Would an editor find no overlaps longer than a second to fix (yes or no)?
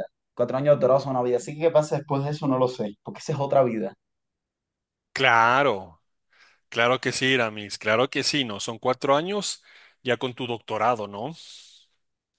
yes